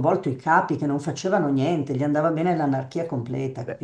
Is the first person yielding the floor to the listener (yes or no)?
yes